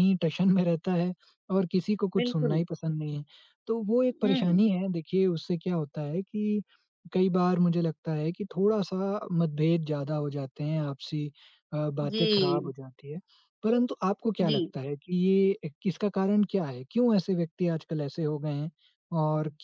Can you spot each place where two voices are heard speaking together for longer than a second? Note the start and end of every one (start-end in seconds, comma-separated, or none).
none